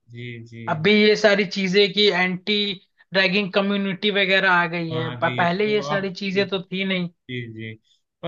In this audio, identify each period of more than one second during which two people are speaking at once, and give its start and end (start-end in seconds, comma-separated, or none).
4.9-6.7